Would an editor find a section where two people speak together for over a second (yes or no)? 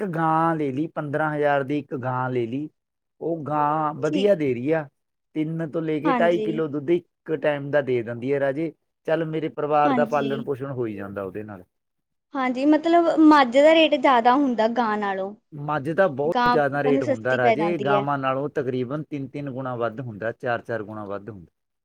yes